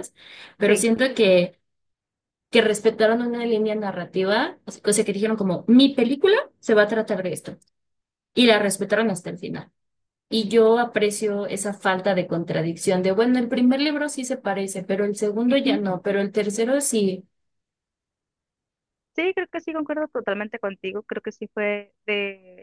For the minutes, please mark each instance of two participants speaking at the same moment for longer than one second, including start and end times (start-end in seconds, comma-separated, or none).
none